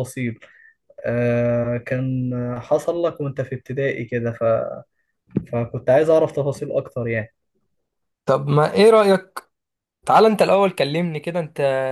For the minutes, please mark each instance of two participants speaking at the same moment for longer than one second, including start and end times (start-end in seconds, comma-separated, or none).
none